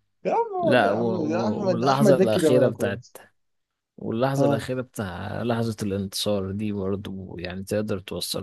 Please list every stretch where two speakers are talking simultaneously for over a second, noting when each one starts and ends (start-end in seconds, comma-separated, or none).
0.6-3.0